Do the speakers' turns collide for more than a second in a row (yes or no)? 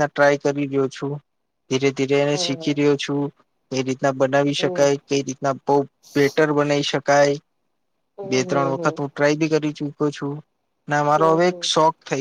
no